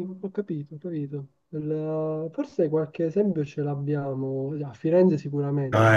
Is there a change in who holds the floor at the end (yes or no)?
yes